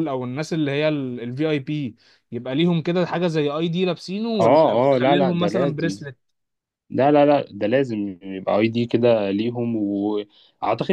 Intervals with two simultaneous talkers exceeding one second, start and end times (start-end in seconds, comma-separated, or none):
4.4-6.0